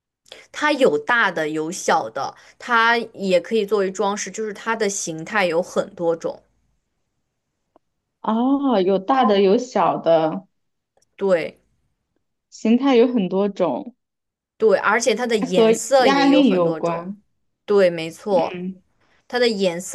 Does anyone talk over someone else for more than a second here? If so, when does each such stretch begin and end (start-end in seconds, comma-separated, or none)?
15.4-17.1